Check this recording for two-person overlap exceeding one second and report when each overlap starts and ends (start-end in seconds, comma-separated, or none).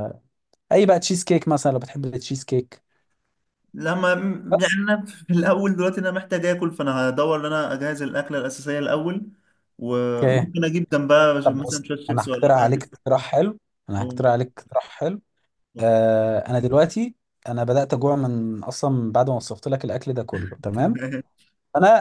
11.4-12.9